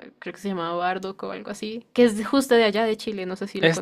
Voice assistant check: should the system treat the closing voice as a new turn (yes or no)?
yes